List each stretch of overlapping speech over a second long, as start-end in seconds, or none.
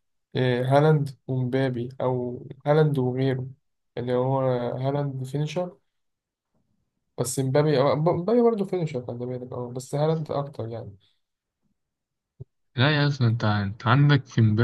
none